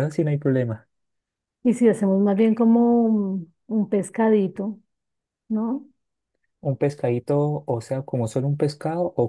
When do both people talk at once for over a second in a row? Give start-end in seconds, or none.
none